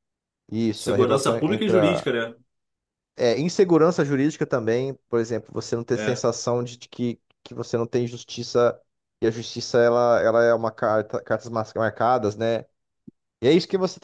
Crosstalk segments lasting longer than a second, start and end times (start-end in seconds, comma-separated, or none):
0.7-2.1